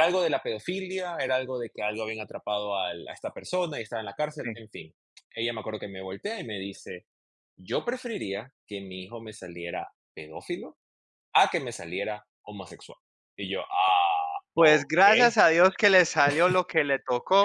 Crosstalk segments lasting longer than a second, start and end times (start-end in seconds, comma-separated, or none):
none